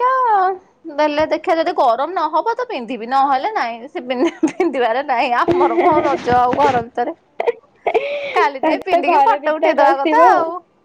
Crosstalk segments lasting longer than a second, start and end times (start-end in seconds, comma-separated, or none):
8.4-10.2